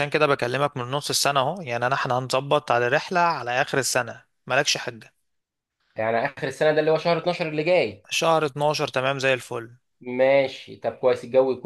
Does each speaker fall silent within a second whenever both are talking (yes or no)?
yes